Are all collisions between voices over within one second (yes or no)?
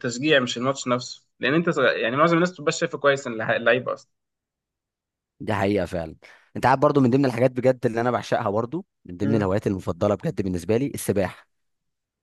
yes